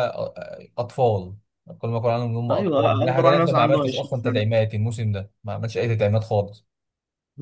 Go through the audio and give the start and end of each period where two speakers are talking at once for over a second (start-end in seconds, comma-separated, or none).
2.5-4.4